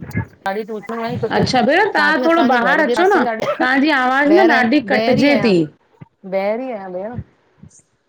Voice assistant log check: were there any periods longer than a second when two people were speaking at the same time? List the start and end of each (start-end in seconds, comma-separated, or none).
1.3-3.2